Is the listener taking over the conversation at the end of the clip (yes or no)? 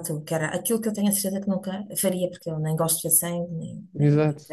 no